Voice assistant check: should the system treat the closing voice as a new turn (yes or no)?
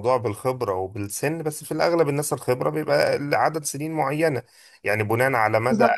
yes